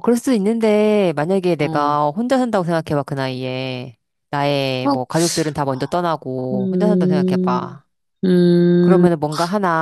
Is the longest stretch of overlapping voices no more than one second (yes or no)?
no